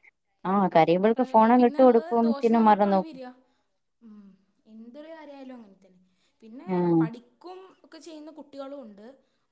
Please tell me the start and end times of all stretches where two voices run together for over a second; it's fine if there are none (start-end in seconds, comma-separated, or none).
1.1-3.2